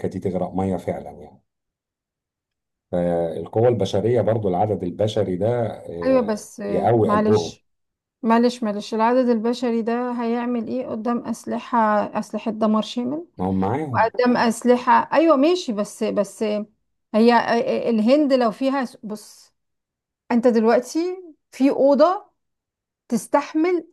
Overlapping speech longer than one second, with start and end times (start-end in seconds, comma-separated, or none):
6.0-7.6